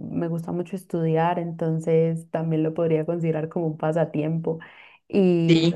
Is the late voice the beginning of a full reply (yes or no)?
no